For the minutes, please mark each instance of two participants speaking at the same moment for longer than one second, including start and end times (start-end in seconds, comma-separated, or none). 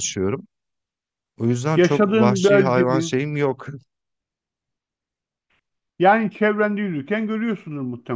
1.8-3.2